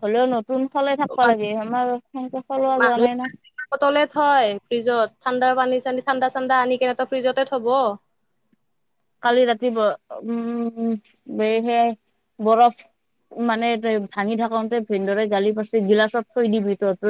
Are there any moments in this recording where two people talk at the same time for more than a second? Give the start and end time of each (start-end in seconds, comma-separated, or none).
none